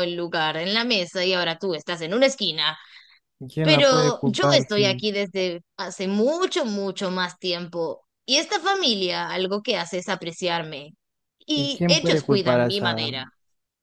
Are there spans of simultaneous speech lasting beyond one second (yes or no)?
yes